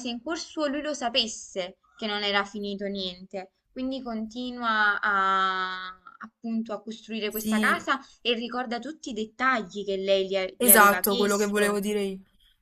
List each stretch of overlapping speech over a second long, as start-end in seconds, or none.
10.6-11.8